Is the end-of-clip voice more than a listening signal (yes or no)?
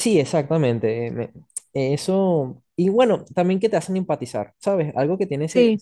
no